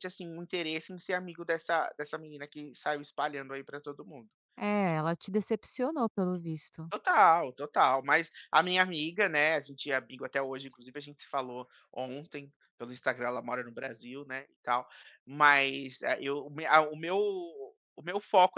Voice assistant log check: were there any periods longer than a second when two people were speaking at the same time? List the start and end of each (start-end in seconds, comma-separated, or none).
none